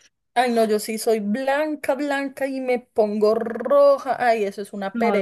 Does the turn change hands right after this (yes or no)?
yes